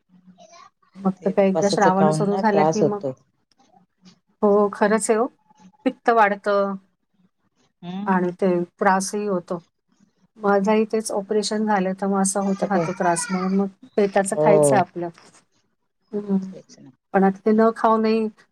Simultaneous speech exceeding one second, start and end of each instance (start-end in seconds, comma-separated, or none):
1.2-3.0